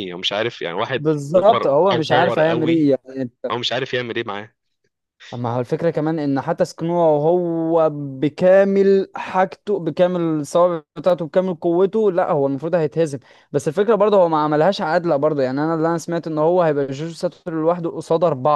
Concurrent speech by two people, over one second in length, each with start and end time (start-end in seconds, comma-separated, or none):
0.9-2.9